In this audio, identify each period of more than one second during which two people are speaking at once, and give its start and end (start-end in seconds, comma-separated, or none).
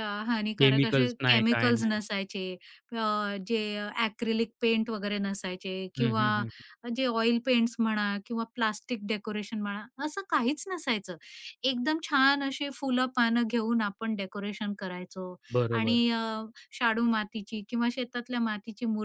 0.6-2.0